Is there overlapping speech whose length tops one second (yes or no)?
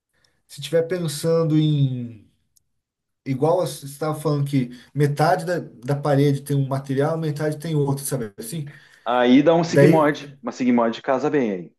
no